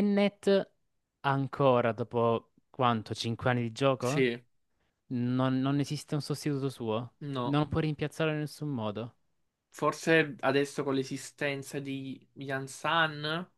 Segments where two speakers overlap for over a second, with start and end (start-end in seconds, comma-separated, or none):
none